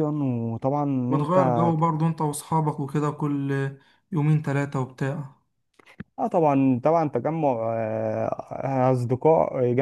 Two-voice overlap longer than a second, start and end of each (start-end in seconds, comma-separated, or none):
none